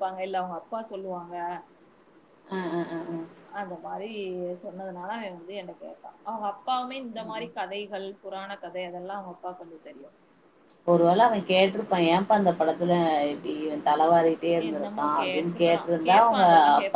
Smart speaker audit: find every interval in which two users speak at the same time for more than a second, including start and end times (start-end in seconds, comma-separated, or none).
14.7-16.5